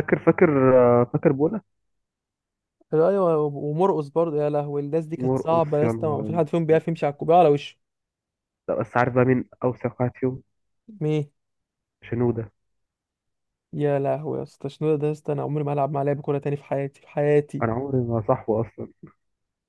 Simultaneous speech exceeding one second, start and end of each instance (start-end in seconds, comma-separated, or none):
5.2-6.5